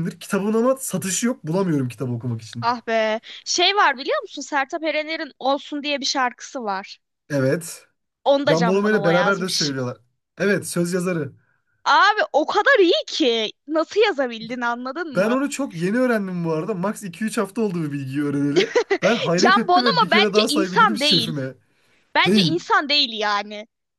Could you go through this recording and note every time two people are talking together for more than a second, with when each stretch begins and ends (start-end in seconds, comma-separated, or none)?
8.5-9.8, 19.4-21.4